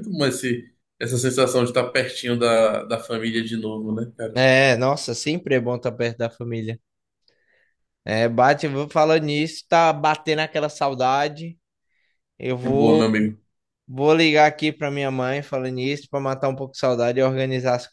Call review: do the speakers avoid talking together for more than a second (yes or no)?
yes